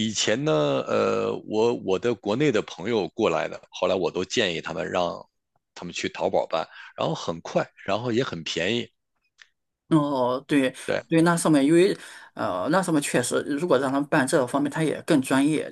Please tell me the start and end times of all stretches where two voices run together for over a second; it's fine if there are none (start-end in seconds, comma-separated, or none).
none